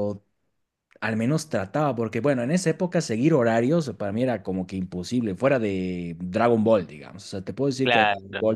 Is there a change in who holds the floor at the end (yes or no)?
no